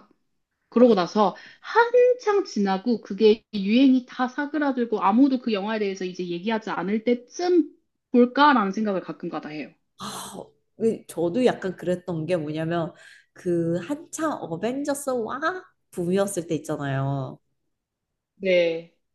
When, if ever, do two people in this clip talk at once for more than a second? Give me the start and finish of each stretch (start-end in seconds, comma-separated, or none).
none